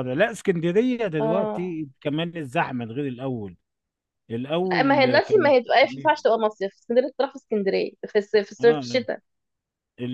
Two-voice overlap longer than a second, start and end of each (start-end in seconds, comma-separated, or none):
4.7-6.2